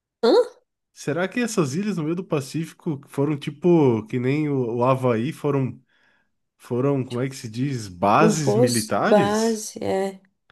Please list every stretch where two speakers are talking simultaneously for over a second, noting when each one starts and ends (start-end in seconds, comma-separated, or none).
8.2-9.7